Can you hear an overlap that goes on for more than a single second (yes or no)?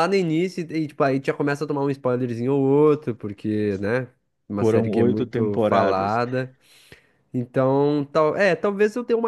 yes